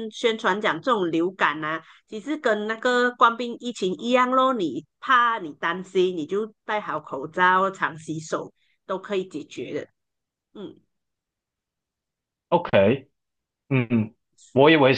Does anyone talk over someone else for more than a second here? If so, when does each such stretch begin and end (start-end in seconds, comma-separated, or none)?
none